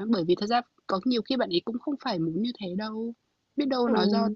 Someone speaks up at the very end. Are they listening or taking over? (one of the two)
listening